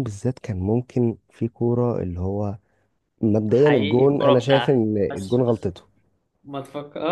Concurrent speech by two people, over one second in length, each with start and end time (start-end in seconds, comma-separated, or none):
3.5-5.7